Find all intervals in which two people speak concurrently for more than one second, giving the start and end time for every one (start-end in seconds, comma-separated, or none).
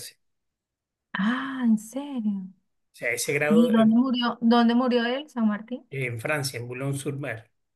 none